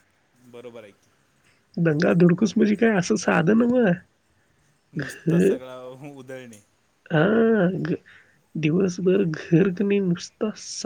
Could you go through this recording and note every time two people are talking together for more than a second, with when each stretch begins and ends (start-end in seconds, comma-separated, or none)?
none